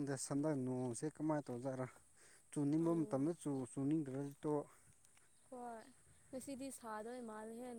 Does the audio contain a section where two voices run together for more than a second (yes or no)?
no